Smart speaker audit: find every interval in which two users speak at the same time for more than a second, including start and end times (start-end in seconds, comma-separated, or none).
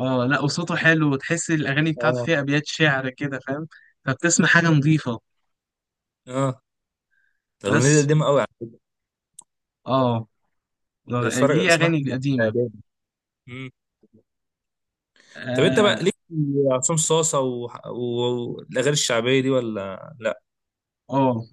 11.1-12.5